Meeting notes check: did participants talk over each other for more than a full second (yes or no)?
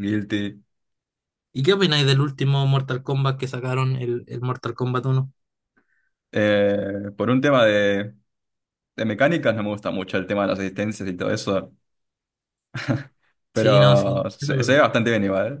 yes